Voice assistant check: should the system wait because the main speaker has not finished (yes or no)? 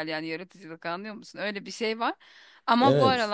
yes